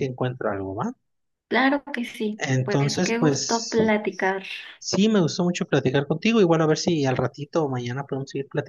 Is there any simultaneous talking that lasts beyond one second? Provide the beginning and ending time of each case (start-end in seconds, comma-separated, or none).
2.4-3.8